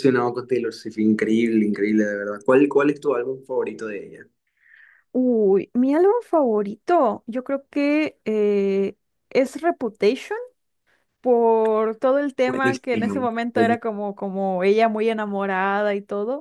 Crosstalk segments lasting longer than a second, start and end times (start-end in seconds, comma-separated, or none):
12.4-13.8